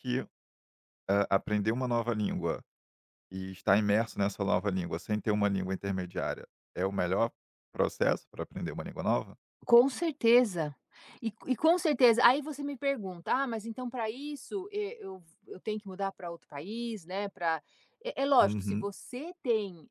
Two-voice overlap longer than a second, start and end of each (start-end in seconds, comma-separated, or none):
none